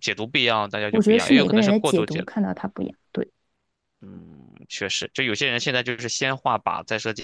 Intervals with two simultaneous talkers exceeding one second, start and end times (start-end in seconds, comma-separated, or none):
0.9-2.3